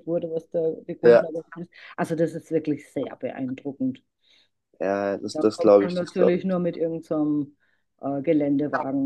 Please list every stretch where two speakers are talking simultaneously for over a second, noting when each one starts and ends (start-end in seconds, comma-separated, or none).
5.2-6.6